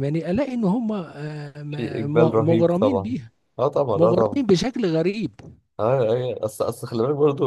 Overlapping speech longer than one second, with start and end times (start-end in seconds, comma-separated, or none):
1.7-3.1